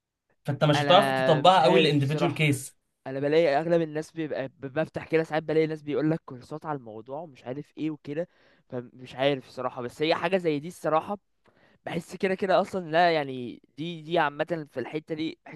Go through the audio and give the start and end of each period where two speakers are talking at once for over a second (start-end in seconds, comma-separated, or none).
0.7-2.5